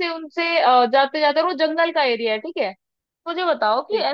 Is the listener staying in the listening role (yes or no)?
yes